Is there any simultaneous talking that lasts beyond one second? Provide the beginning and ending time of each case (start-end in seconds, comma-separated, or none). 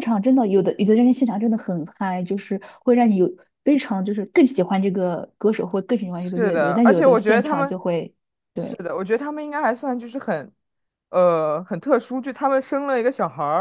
6.1-7.7